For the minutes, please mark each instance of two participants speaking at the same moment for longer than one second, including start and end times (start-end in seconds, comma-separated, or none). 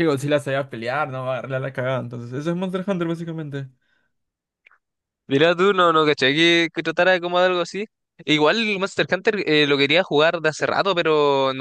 none